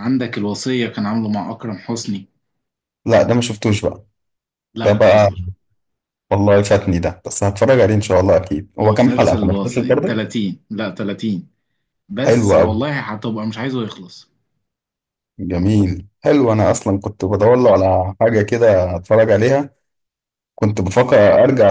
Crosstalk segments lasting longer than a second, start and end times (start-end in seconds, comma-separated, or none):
8.8-10.2